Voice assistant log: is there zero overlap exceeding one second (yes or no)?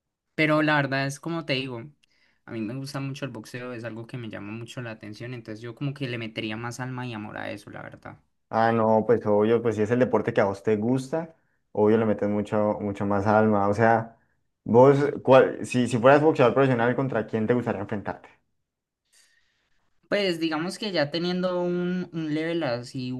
yes